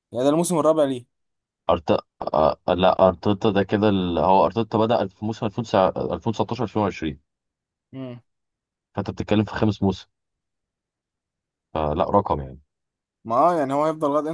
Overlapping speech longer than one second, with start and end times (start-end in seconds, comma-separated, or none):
none